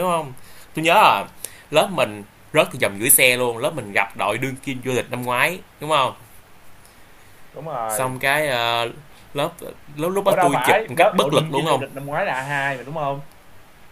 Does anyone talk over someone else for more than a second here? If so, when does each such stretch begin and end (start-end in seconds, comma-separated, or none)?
10.2-11.8